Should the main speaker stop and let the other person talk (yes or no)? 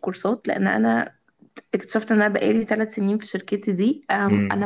no